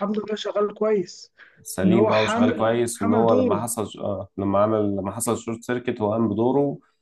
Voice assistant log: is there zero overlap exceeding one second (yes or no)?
no